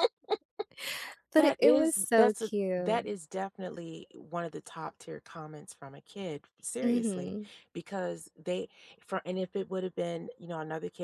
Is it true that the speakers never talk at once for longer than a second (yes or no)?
no